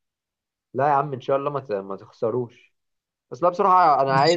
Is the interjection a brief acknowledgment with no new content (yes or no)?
yes